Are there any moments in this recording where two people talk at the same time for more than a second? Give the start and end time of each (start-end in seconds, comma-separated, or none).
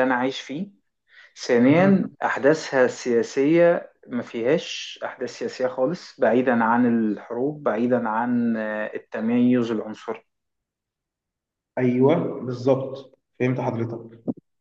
none